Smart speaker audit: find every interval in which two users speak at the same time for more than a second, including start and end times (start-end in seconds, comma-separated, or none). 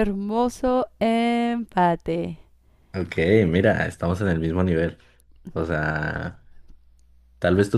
none